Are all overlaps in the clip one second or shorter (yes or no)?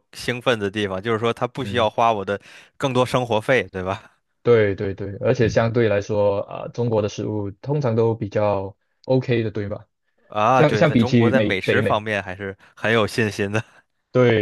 no